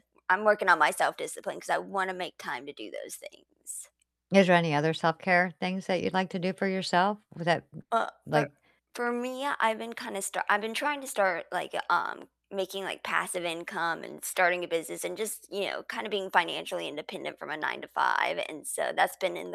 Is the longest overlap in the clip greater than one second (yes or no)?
no